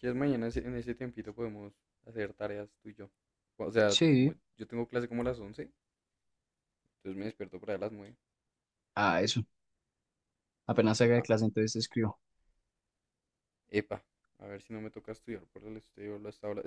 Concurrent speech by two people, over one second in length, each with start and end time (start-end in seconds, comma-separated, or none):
none